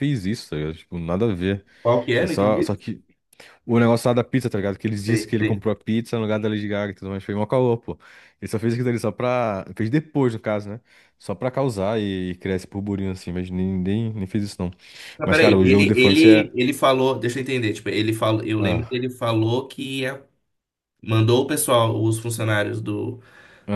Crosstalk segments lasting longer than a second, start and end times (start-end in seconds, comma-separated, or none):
15.2-16.5